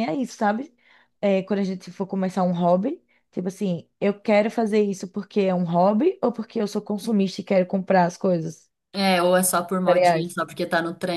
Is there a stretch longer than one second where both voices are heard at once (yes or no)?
no